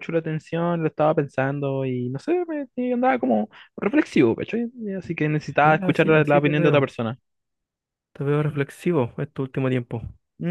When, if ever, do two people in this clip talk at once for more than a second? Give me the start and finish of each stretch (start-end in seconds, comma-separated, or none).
5.6-6.9